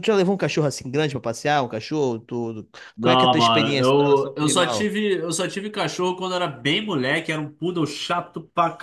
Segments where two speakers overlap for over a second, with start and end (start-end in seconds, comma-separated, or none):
3.0-4.9